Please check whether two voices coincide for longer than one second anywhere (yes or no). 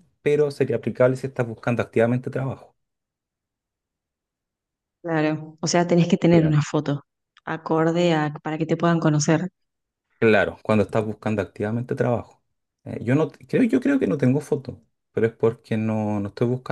no